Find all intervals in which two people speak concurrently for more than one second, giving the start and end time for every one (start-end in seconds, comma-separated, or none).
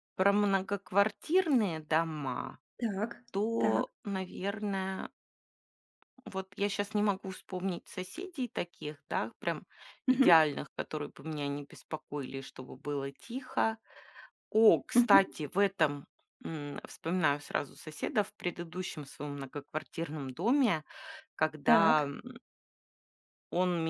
none